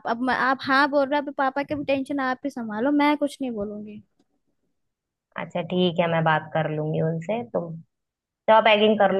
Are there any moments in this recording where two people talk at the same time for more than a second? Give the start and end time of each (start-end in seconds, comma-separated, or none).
none